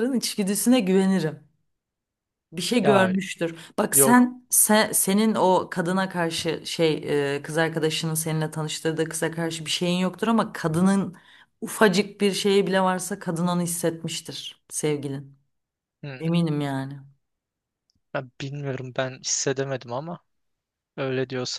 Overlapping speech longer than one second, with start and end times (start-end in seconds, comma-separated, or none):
none